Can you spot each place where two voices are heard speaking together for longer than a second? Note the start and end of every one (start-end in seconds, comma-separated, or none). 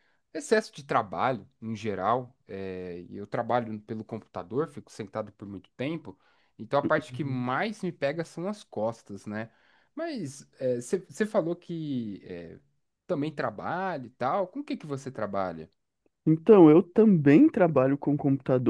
none